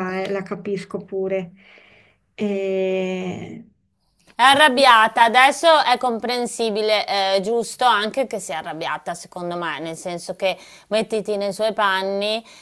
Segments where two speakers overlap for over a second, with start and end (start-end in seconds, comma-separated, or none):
none